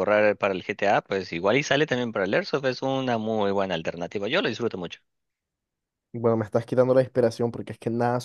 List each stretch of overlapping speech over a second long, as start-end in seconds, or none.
none